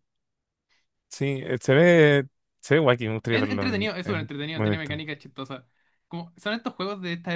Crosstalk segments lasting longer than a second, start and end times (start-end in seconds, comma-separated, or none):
3.3-5.0